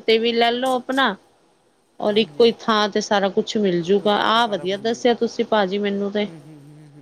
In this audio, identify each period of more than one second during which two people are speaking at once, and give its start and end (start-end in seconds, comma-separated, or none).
3.9-5.5